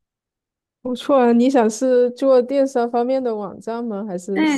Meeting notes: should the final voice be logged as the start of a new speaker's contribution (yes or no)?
yes